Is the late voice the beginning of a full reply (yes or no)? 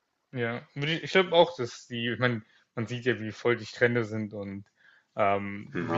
no